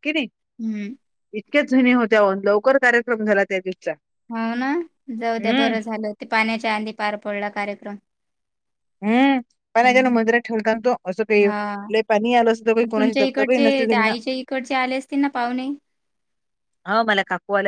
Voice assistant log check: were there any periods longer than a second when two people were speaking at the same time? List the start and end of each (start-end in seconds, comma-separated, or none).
none